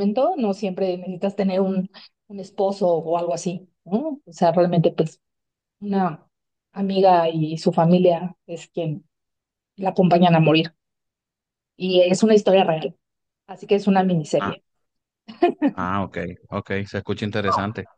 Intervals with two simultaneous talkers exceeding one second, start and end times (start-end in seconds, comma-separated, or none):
none